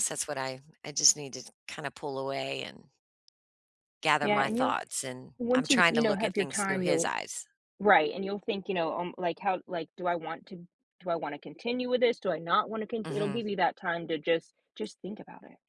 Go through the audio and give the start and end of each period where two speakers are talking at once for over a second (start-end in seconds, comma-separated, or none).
5.4-7.1